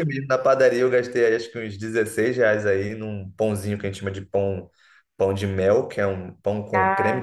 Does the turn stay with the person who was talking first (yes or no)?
yes